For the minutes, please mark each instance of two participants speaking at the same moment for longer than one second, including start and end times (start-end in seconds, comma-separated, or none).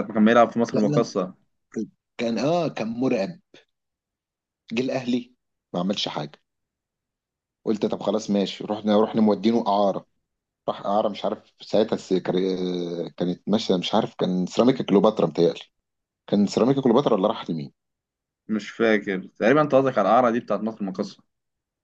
none